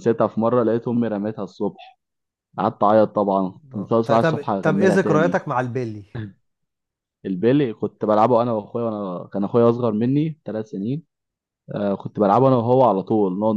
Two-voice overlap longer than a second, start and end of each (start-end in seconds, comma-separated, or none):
3.7-5.4